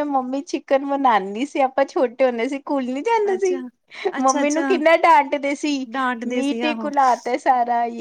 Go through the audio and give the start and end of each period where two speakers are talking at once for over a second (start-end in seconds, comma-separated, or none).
none